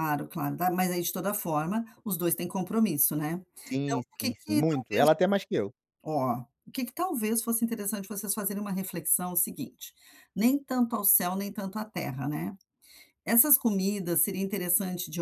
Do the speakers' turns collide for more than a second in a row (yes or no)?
yes